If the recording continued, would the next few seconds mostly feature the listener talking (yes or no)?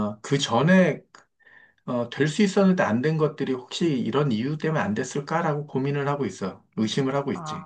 yes